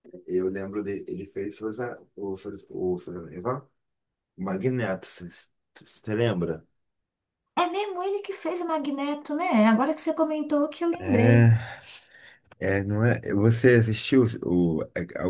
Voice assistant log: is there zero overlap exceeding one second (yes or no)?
yes